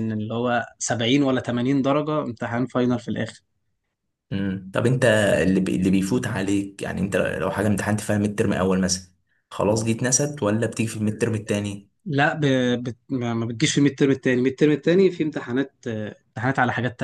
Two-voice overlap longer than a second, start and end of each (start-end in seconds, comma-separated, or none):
none